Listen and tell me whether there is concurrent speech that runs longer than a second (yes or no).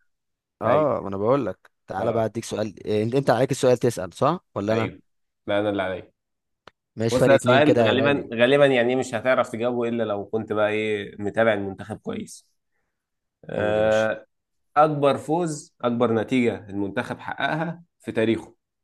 yes